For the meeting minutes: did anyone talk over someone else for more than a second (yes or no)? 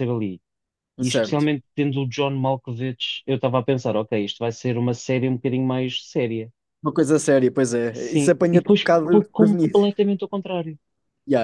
yes